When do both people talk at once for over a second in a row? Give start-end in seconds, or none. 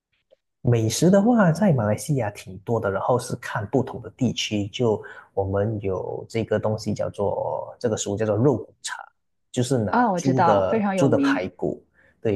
9.9-11.5